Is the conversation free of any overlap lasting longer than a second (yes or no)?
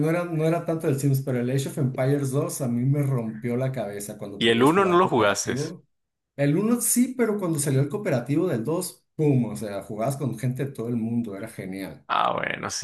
no